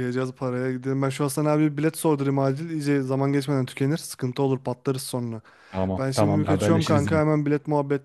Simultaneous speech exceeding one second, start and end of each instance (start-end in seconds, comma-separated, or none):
6.0-7.2